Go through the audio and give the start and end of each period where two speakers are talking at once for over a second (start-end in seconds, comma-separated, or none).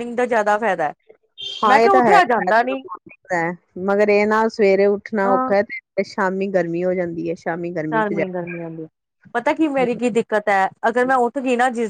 none